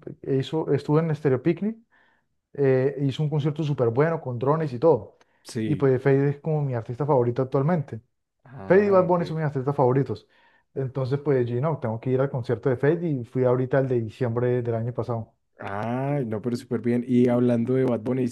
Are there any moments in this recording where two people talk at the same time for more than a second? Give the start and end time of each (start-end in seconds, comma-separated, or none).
none